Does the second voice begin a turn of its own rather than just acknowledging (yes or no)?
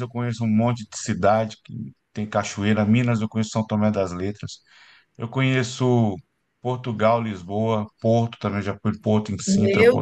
yes